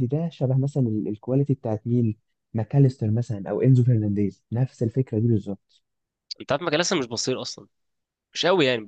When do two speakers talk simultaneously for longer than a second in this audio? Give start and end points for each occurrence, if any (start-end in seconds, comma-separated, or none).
none